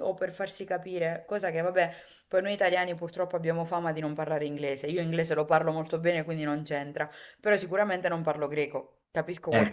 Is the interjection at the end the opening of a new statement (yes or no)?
no